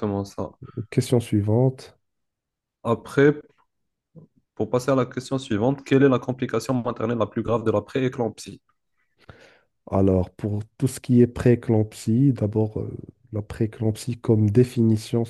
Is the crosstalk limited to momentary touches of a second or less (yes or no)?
yes